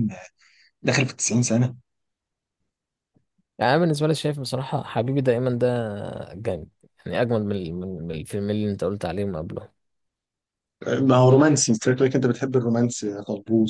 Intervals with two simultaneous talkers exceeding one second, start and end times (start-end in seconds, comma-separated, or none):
none